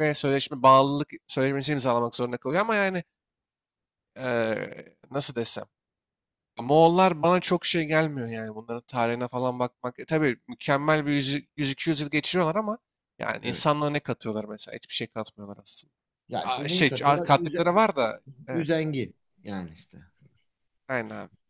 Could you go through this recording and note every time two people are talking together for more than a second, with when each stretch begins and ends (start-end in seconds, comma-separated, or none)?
16.4-17.7